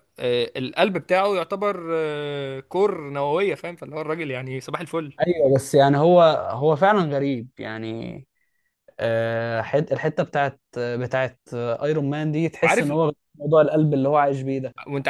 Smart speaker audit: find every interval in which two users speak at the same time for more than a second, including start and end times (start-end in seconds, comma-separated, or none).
none